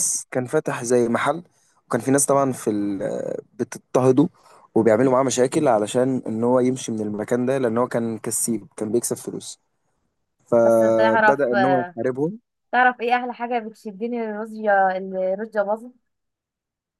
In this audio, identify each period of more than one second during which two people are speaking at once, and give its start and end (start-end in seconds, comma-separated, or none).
10.6-12.0